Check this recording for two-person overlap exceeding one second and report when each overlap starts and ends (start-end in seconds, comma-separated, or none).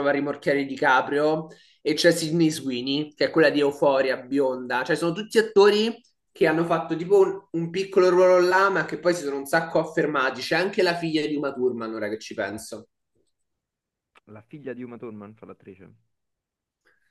none